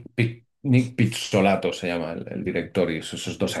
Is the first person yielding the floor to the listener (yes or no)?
no